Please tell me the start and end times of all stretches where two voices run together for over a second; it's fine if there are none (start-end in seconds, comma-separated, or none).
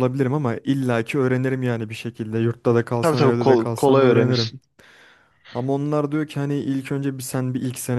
3.0-4.5